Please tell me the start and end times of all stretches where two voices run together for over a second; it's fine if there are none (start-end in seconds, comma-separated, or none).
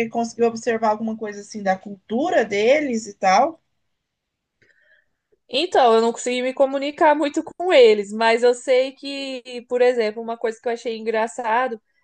none